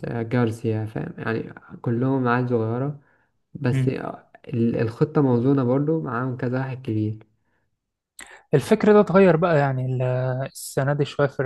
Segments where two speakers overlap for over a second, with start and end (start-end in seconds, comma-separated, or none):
none